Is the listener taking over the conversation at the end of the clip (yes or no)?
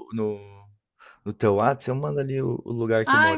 yes